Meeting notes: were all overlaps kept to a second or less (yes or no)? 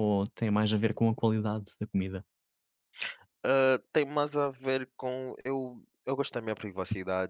yes